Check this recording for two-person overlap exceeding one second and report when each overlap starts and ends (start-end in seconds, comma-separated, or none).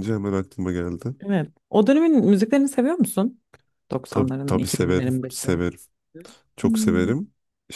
4.1-5.5